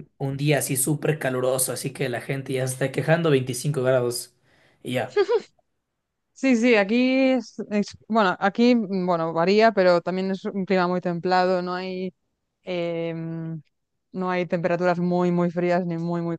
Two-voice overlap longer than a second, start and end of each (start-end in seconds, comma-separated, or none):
none